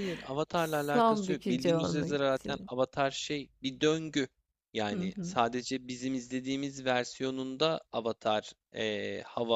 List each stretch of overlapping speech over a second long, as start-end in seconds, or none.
0.5-2.7